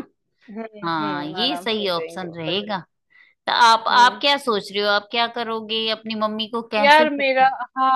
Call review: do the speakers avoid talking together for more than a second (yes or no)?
no